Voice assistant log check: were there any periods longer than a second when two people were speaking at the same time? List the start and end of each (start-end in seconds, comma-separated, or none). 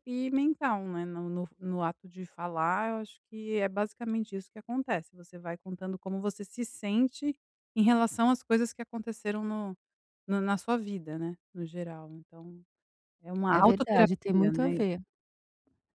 13.5-14.8